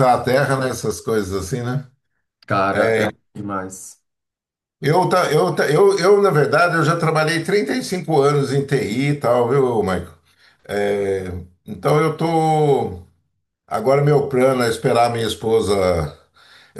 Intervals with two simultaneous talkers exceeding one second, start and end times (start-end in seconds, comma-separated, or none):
none